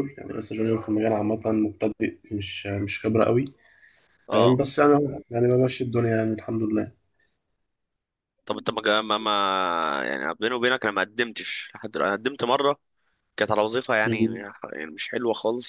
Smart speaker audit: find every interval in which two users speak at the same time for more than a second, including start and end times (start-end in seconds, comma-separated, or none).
none